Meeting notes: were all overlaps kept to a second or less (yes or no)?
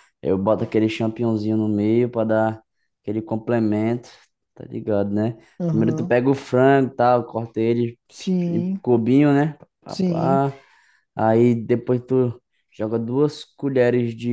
yes